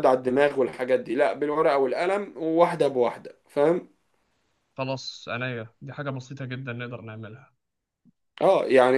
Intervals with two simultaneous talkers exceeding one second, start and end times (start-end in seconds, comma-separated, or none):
none